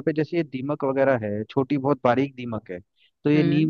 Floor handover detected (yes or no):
no